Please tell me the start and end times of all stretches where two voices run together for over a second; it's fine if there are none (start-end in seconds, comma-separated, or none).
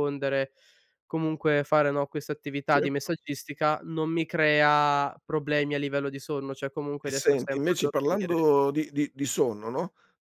7.0-8.4